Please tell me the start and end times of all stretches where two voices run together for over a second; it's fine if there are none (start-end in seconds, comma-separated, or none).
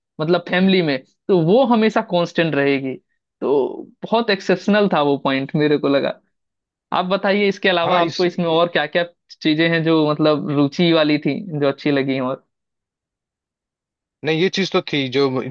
none